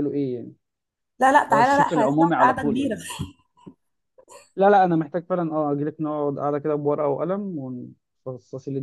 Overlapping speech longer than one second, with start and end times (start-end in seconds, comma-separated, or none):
1.5-2.9